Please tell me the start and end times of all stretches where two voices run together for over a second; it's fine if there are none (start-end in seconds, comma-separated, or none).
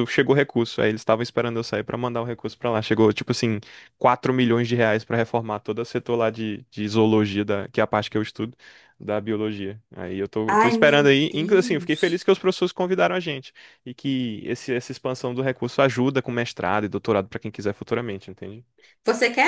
10.5-12.2